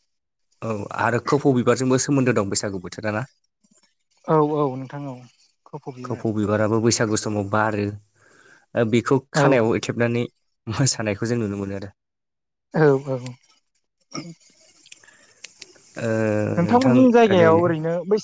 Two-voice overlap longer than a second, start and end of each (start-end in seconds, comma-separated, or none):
none